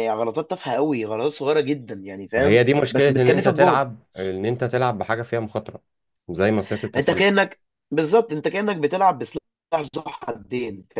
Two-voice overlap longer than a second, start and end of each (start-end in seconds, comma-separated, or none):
2.4-3.8